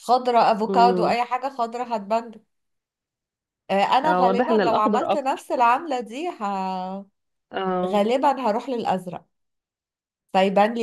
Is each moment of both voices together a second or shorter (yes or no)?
no